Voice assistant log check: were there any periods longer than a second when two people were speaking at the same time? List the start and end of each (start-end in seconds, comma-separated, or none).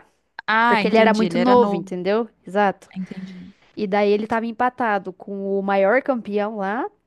0.7-1.9